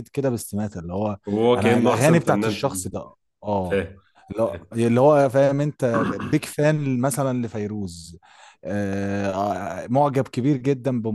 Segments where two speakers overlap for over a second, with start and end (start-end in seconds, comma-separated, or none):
1.6-2.9